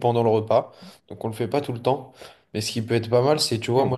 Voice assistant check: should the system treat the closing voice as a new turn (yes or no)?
no